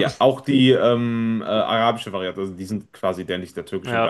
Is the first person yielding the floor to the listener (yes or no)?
no